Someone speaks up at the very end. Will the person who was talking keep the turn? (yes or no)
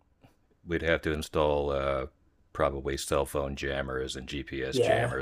yes